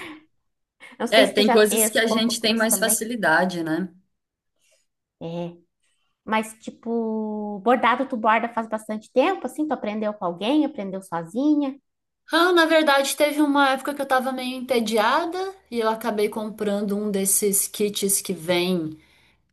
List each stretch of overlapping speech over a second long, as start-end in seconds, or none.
1.1-3.0